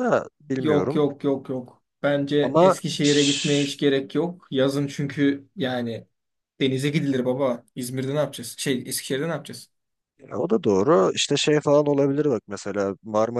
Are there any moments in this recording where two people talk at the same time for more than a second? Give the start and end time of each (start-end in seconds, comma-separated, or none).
2.4-3.7